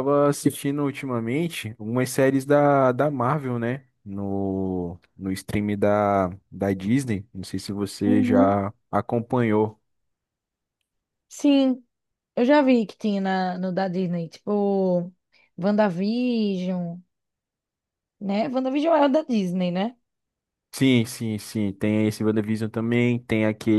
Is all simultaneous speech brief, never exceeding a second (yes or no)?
yes